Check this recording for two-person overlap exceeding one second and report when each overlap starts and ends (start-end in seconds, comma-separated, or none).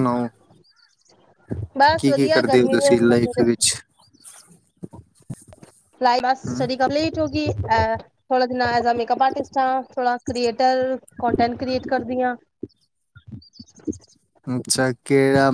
2.0-3.4